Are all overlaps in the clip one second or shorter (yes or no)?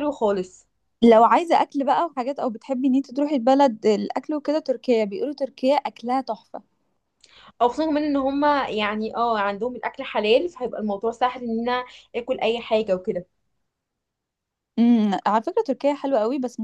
yes